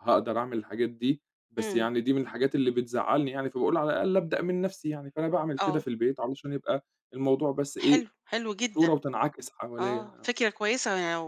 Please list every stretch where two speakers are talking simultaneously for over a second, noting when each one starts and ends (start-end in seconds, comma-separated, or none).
none